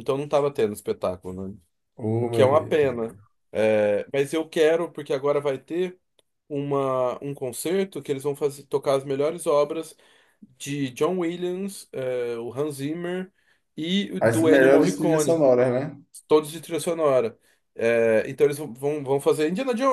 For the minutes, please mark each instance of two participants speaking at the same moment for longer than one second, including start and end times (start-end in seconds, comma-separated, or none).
14.2-15.4